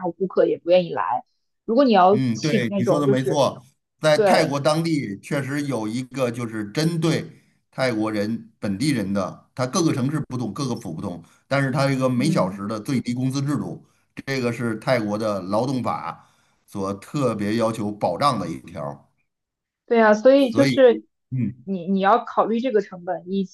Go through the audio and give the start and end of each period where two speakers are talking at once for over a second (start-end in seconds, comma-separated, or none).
2.1-3.4